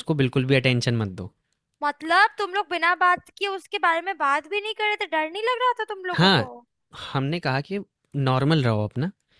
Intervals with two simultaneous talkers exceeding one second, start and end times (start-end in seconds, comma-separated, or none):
none